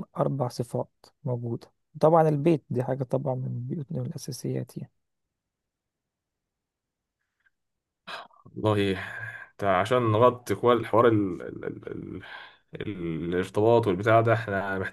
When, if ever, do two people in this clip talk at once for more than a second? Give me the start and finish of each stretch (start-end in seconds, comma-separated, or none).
none